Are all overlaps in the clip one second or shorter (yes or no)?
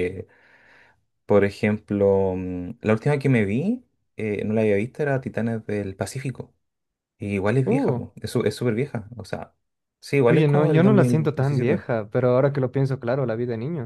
no